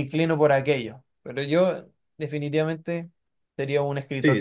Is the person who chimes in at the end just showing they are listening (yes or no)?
no